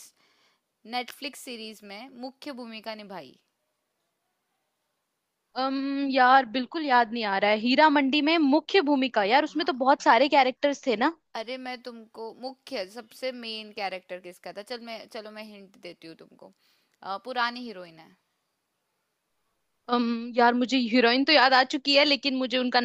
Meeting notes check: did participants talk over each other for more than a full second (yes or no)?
no